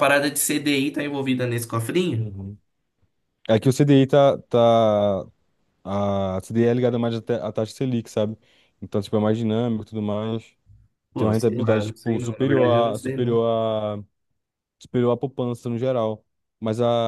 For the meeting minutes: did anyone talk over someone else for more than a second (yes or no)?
yes